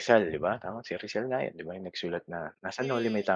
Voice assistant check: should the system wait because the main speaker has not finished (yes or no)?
no